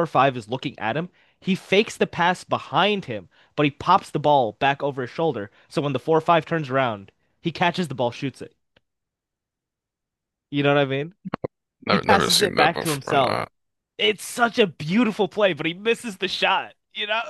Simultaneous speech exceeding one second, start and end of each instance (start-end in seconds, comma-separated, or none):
11.9-13.4